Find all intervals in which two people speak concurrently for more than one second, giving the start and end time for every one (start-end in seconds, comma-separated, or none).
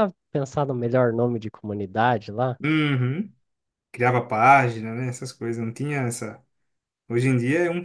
none